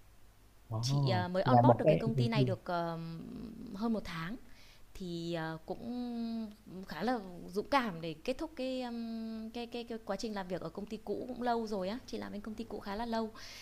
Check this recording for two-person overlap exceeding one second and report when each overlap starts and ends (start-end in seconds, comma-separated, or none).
0.8-2.6